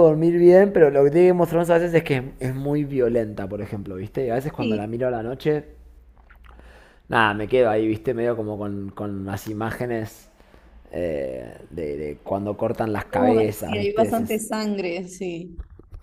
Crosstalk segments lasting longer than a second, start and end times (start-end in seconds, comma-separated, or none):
12.9-14.4